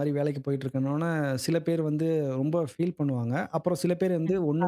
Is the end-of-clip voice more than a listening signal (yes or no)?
no